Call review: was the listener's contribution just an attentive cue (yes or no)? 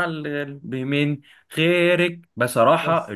yes